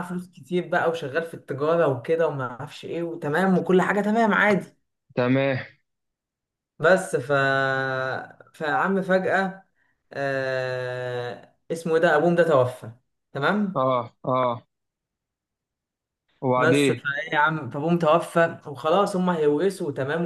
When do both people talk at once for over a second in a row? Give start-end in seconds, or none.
none